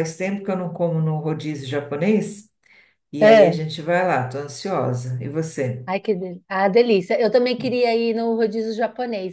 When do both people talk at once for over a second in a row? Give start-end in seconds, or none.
none